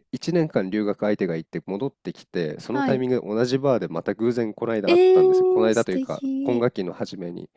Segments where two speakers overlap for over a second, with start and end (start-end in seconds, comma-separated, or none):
4.9-6.7